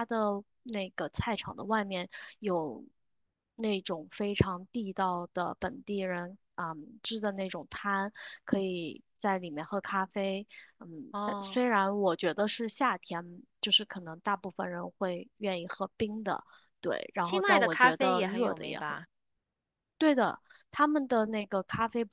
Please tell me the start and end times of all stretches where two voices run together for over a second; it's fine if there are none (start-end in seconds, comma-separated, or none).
17.2-19.0